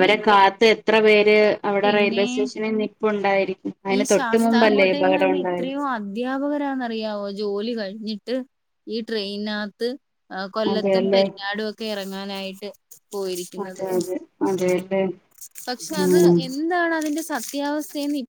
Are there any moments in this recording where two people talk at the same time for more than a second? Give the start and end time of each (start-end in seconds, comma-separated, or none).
4.0-5.7